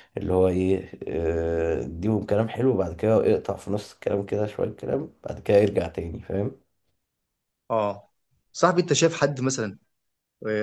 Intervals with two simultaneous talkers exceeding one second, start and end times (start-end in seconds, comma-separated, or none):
none